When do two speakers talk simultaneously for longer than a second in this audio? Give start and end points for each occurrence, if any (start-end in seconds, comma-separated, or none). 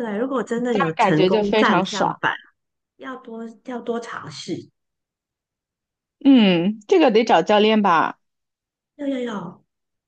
0.7-2.2